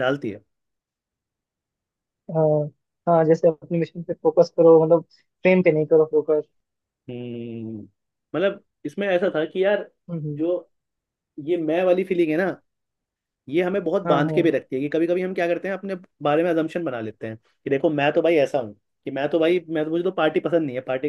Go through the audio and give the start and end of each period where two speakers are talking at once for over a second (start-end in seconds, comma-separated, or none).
none